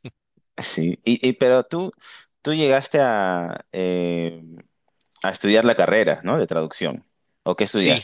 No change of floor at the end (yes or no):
no